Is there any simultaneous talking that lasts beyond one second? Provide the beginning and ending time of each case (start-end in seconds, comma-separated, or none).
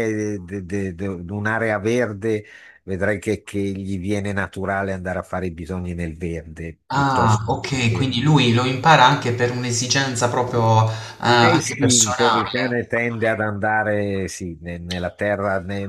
6.9-8.2, 11.3-12.8